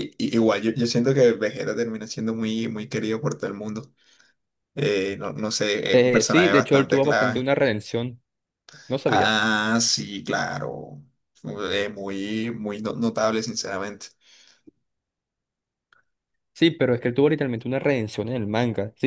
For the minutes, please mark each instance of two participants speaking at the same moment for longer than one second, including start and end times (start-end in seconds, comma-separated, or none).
5.9-7.4